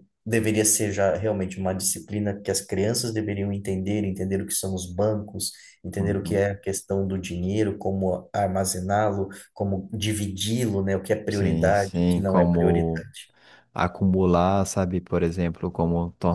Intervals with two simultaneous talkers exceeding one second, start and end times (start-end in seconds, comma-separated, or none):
11.3-13.0